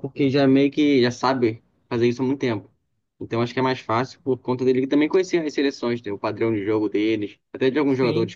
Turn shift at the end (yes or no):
no